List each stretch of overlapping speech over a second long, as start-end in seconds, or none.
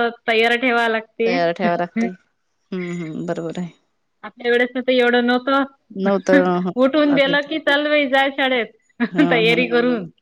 none